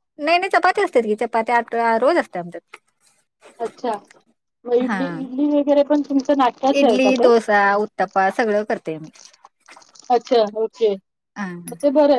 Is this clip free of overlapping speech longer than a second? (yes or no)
yes